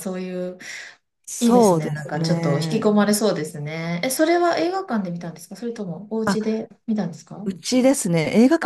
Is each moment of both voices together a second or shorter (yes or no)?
no